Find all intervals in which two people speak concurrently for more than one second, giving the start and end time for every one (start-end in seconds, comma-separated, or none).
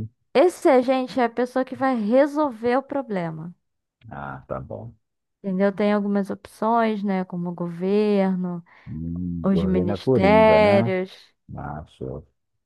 9.4-10.9